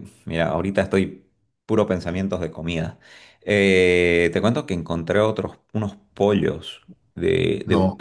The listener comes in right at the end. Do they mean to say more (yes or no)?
no